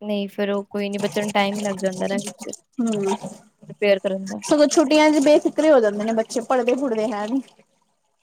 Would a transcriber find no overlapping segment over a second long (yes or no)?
yes